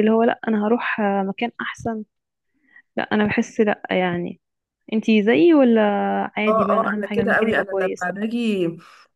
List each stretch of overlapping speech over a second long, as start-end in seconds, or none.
6.5-8.1